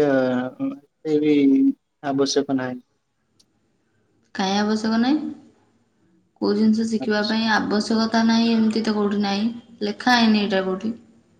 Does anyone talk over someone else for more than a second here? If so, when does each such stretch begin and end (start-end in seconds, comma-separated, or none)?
none